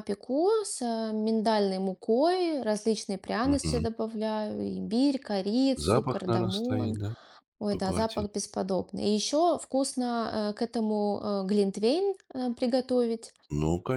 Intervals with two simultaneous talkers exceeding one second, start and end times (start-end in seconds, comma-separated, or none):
5.8-7.0